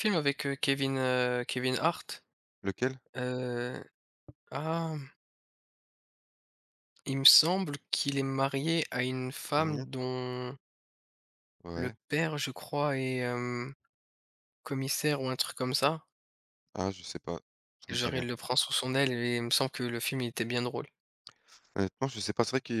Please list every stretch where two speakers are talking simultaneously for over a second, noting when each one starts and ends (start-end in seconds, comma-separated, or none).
none